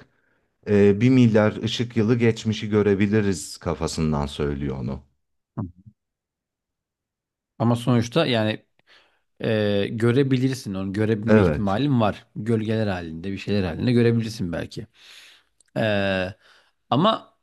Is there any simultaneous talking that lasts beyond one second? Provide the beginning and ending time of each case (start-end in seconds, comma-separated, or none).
none